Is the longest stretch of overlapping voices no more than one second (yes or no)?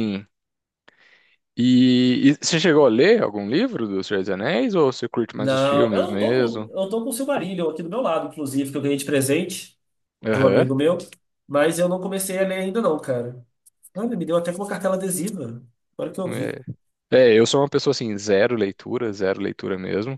no